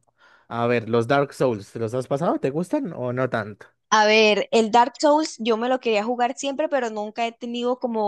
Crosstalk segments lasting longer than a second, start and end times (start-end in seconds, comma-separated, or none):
none